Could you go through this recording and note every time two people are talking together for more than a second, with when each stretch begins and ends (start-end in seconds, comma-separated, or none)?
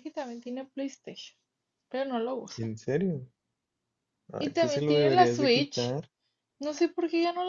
4.4-6.0